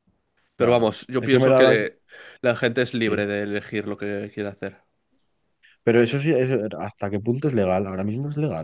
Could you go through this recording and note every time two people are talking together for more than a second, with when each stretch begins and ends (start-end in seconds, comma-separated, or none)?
0.6-1.8